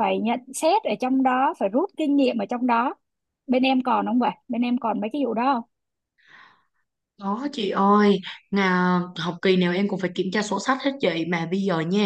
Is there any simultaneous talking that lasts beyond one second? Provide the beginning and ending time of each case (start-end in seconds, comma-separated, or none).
none